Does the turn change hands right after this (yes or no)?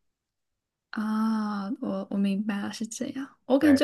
no